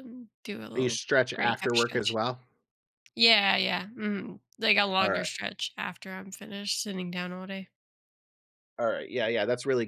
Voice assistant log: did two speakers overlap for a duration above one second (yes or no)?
yes